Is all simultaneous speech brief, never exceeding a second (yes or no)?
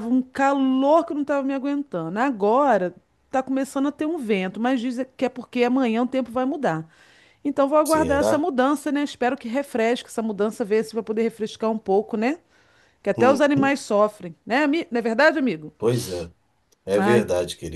yes